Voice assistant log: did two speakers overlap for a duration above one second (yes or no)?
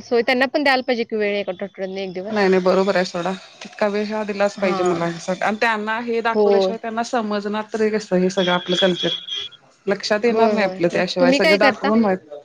yes